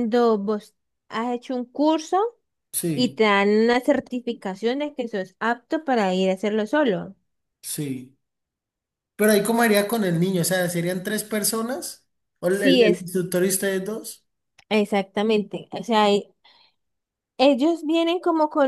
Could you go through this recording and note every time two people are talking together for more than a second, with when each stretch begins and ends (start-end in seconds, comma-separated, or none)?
none